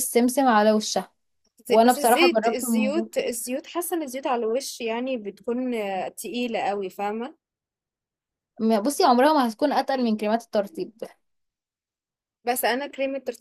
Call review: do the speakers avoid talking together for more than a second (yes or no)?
no